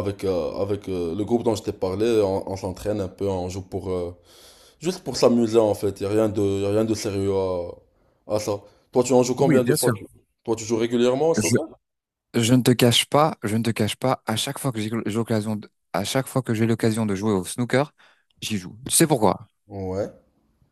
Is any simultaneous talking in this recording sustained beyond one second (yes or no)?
no